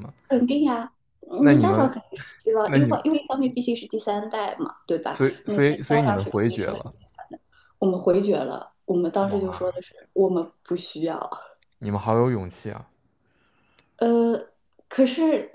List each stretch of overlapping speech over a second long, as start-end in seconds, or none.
5.1-6.9